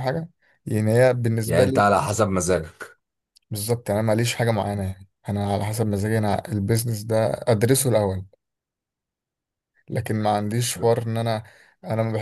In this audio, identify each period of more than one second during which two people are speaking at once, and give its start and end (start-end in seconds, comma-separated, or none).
none